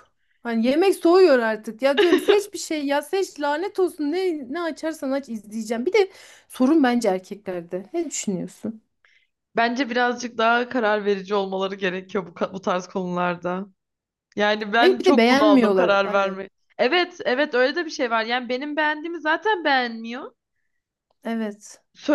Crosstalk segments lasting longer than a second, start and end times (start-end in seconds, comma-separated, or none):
14.7-16.4